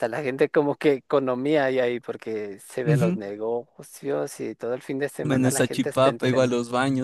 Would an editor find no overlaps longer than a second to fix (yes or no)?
no